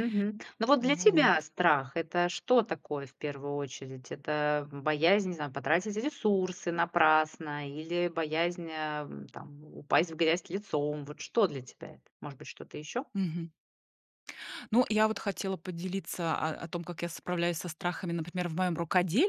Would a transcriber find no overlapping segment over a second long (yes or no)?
yes